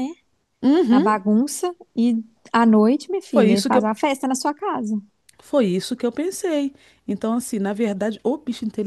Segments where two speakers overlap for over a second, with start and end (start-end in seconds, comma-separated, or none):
none